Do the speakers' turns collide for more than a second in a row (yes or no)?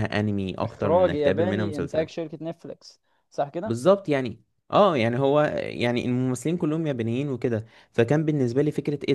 yes